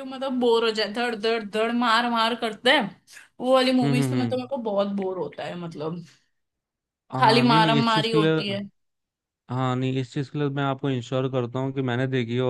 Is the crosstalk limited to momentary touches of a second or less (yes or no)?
no